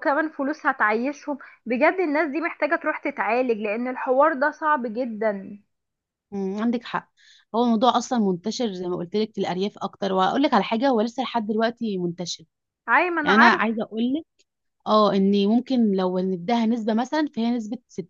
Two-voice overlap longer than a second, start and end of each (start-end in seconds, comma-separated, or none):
none